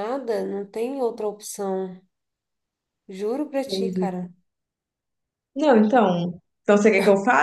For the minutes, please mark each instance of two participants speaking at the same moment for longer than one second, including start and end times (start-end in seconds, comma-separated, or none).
none